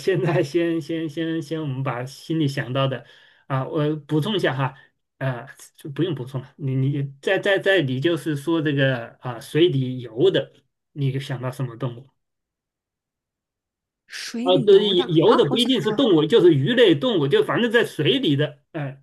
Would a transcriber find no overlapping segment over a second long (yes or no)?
no